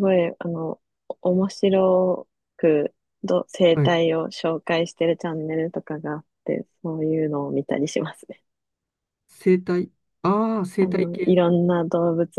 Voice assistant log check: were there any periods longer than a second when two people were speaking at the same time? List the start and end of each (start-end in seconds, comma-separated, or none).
none